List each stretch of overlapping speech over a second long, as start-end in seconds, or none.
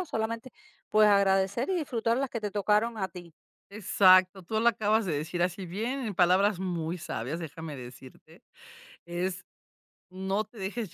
none